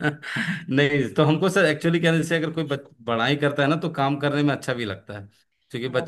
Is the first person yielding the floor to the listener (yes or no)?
no